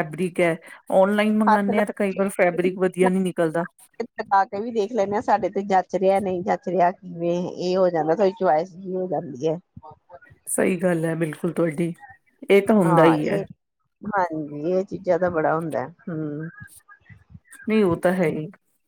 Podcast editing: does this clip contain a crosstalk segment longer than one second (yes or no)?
no